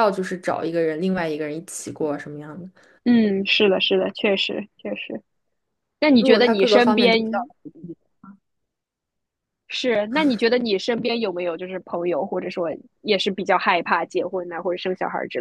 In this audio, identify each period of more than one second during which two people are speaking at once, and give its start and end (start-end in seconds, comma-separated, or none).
6.2-7.4